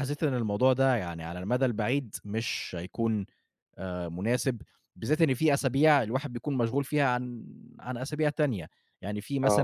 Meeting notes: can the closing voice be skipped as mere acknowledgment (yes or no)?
yes